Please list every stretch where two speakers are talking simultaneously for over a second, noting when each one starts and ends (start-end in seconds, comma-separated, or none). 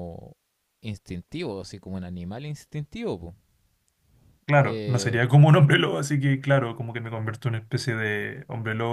none